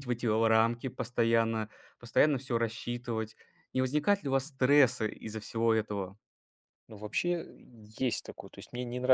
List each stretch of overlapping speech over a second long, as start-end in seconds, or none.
none